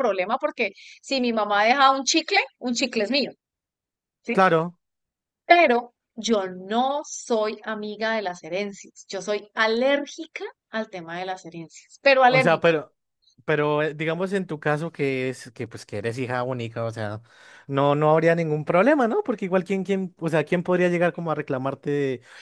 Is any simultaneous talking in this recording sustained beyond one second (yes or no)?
no